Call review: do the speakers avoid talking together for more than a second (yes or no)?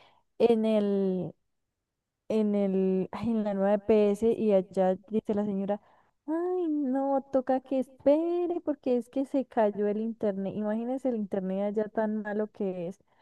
no